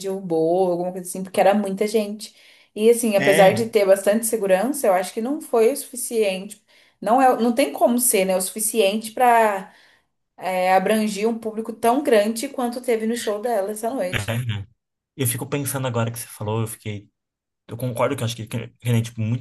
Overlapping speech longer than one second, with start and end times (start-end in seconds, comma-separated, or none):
none